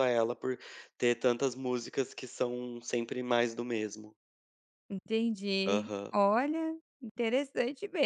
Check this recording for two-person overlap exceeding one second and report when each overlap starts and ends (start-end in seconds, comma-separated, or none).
none